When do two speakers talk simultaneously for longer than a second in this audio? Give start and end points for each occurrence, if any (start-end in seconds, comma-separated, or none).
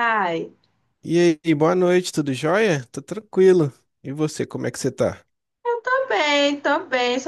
none